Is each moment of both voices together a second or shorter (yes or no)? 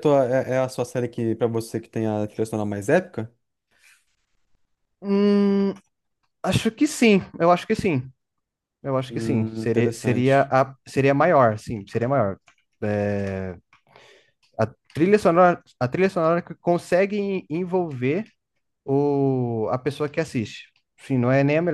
no